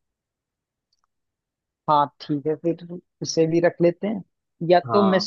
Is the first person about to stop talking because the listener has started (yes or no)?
no